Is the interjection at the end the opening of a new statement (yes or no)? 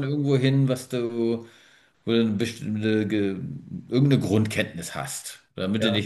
no